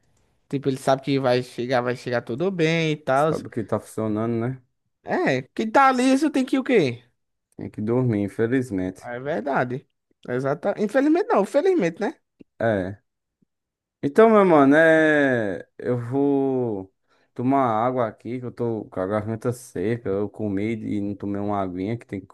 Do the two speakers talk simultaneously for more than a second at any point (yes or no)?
no